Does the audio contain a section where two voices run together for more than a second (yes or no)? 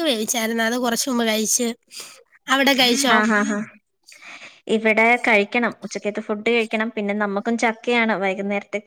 no